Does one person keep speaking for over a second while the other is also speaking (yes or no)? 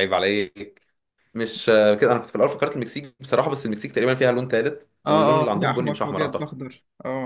yes